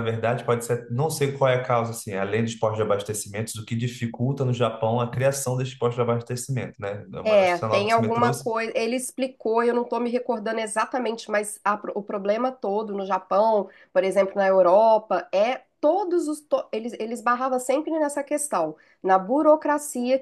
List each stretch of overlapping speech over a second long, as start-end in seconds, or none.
7.2-8.4